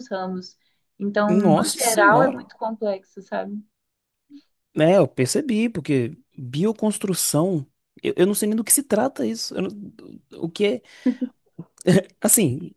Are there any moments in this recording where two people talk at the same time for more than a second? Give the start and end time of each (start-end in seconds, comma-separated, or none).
1.3-2.5